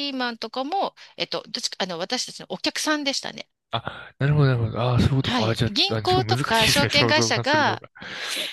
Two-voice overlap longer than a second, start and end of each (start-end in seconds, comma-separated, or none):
5.2-7.8